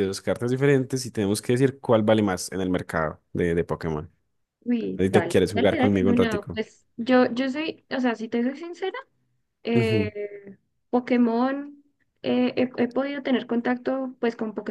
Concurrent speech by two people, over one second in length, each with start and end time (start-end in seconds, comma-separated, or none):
5.0-6.6